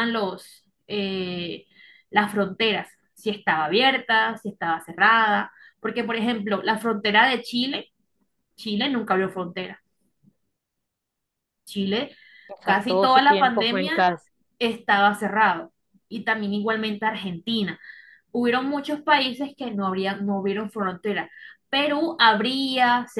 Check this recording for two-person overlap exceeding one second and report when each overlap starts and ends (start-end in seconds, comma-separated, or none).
12.6-13.9